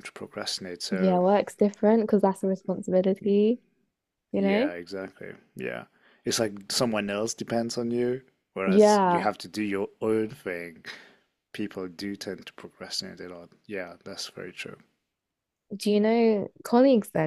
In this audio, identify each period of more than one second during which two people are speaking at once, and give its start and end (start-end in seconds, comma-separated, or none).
none